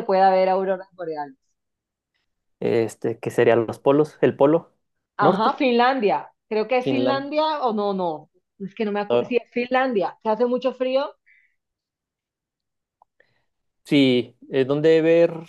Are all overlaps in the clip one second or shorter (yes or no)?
yes